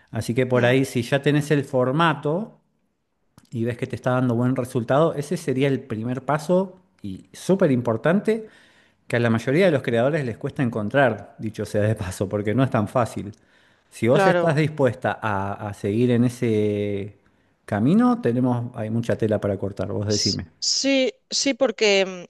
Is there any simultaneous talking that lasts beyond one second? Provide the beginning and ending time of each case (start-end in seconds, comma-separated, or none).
none